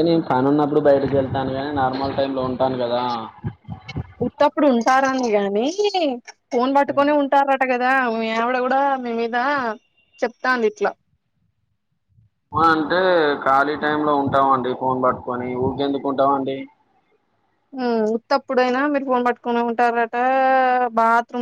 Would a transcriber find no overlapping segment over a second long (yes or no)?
yes